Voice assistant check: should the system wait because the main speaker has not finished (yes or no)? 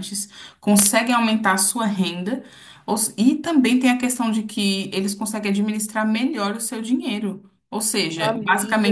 yes